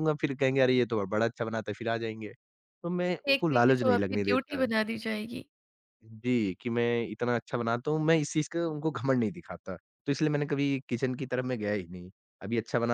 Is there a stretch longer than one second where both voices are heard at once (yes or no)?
yes